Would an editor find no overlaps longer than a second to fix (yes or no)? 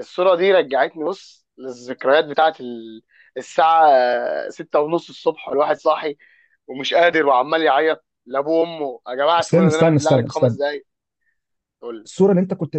no